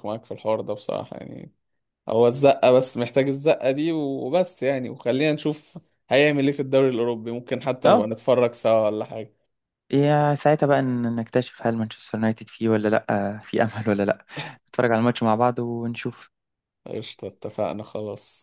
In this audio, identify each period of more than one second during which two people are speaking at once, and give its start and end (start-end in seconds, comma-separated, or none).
none